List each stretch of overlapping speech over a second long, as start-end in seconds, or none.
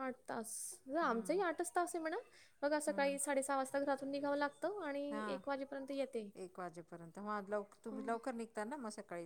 none